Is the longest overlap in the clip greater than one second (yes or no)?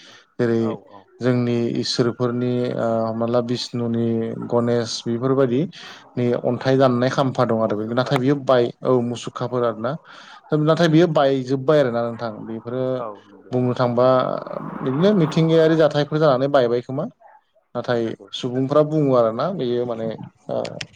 no